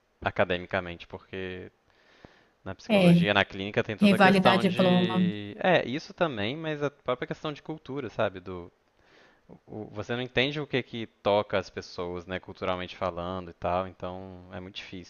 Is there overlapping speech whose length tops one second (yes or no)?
yes